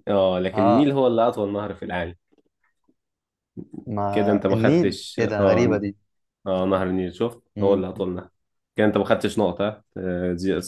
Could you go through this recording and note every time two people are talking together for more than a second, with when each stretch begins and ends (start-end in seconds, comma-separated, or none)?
4.1-5.8